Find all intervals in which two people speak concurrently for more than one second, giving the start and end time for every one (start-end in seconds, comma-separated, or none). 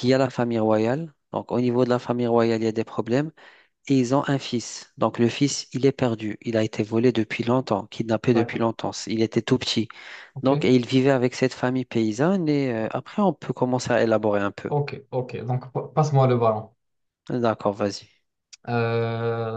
none